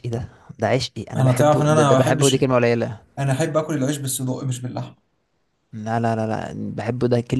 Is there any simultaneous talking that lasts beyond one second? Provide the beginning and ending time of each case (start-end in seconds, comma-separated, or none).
1.2-2.4